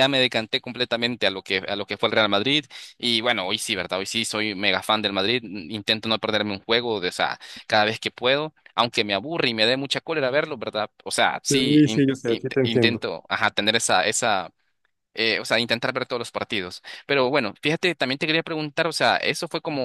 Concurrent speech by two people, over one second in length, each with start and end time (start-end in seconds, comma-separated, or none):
11.5-13.0